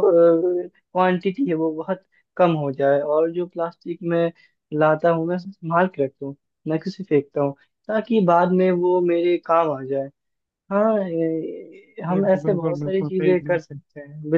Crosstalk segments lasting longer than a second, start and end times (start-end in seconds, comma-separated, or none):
12.1-13.8